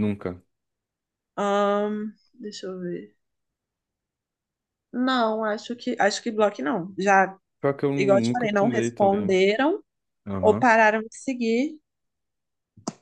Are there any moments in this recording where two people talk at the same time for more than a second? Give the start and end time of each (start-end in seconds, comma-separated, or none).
8.0-9.4